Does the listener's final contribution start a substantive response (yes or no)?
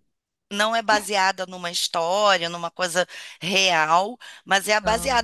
no